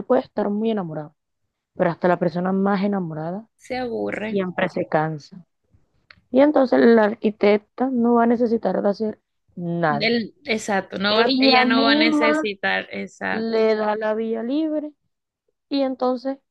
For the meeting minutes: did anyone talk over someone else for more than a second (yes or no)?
yes